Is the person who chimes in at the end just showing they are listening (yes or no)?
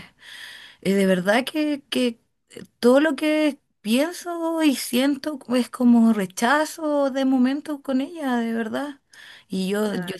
yes